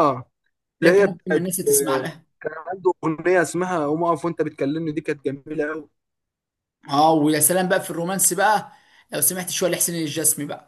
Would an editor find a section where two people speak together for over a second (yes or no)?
yes